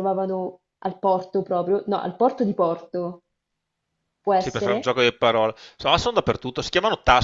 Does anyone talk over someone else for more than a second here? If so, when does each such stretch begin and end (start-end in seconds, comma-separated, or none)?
none